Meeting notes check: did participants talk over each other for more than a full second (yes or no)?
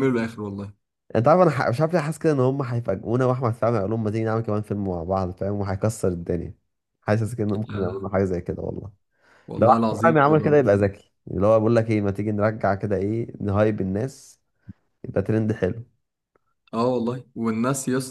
yes